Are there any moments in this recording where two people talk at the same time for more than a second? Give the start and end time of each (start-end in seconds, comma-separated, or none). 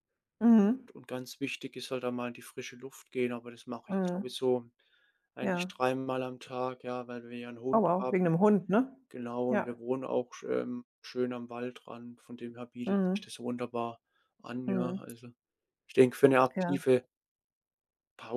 none